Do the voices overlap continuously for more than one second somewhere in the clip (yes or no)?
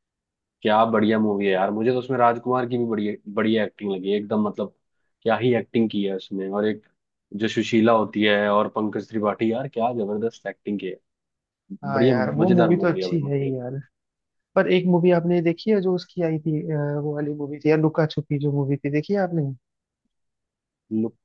yes